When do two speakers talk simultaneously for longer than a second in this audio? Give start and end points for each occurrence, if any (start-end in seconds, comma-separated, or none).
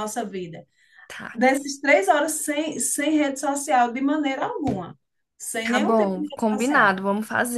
5.6-7.0